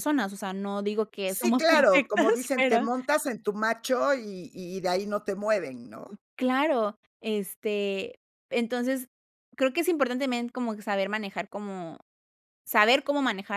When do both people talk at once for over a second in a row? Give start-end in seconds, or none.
1.3-2.9